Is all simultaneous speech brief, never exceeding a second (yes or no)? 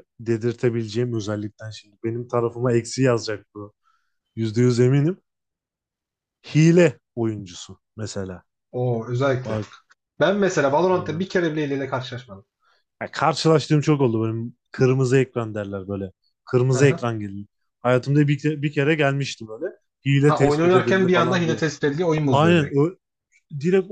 no